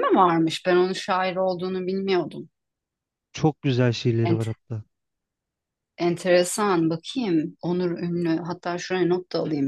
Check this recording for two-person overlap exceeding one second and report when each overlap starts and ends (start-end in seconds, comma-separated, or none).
none